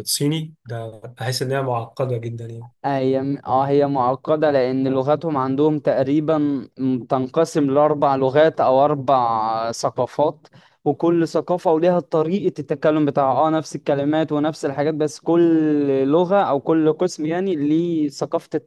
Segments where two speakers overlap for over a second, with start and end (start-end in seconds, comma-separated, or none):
none